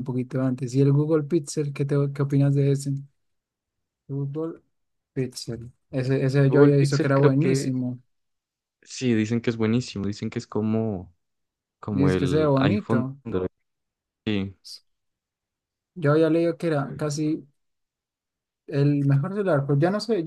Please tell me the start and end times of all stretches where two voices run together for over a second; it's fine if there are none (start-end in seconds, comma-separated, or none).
6.5-7.7, 11.9-13.2